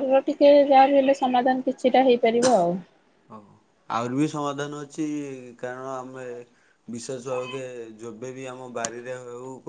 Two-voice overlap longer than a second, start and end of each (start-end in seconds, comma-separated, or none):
none